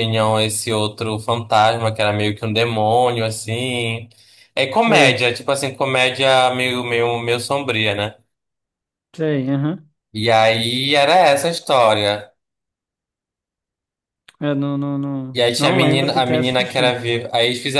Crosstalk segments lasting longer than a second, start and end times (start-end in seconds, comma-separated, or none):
15.3-17.0